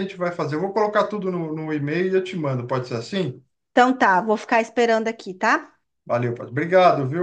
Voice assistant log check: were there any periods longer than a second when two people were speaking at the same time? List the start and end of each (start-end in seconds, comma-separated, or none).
none